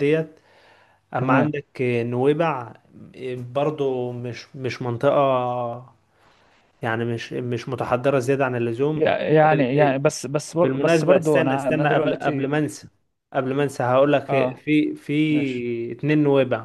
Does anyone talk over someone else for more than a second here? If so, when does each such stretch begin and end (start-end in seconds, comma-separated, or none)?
10.6-12.5